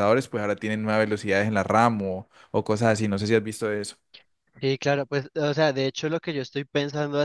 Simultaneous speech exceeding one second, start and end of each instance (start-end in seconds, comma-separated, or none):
none